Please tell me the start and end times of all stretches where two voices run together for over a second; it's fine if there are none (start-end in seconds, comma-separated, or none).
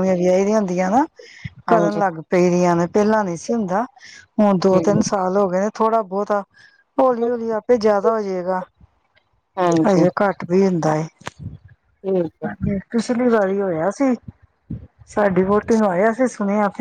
none